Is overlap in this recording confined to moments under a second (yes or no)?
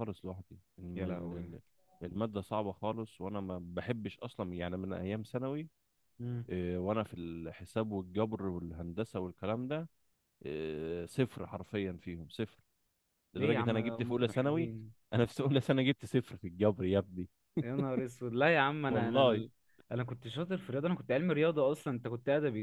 no